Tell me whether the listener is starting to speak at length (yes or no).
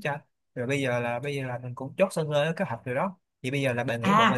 yes